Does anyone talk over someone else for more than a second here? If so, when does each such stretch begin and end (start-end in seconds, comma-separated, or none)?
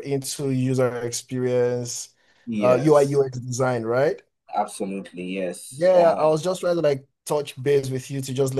none